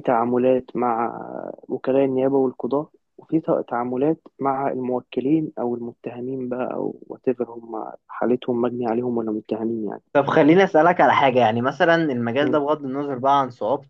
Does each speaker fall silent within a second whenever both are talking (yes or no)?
yes